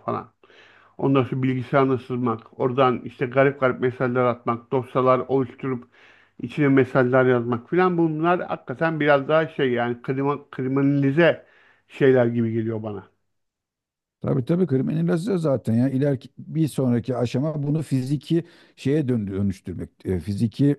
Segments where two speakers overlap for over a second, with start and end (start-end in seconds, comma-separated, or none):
none